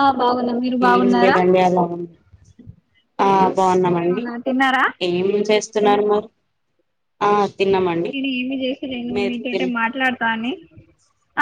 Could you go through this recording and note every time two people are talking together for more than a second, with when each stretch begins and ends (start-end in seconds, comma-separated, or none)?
none